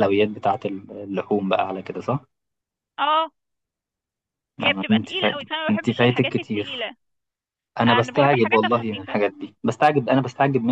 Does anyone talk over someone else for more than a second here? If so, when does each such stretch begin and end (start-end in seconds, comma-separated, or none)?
4.6-6.9, 7.9-9.2